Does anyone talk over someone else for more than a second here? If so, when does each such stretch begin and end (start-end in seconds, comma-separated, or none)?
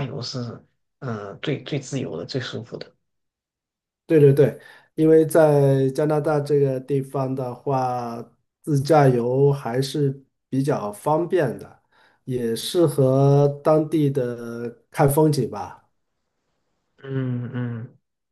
none